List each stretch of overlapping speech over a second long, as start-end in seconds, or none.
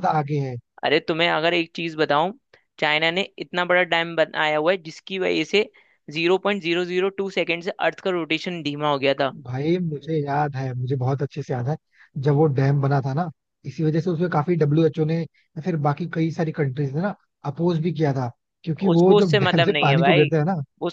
18.9-20.3